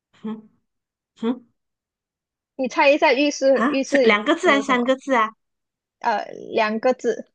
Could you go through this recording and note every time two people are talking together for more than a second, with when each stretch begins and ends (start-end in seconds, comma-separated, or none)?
3.5-5.0